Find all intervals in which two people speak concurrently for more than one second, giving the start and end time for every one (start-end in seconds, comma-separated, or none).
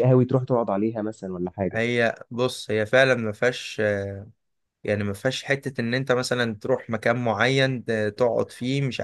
none